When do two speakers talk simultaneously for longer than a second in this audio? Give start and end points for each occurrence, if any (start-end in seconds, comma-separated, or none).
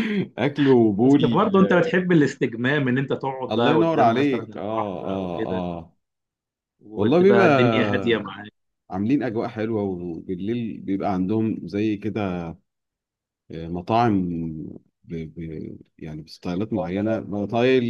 3.5-5.6